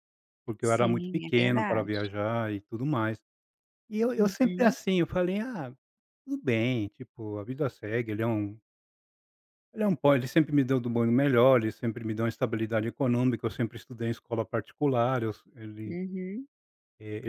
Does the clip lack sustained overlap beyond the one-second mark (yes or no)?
no